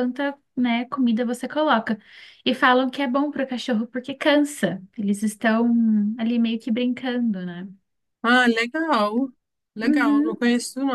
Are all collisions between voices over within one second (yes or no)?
yes